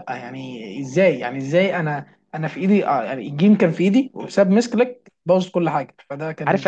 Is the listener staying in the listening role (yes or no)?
no